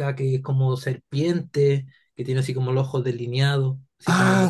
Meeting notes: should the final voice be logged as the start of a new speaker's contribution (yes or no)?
yes